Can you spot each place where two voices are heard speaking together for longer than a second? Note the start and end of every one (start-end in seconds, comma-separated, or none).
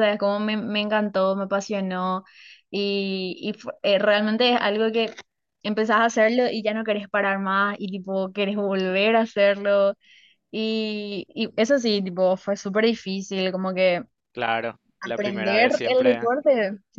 15.0-16.3